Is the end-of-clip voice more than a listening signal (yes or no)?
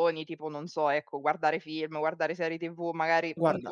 no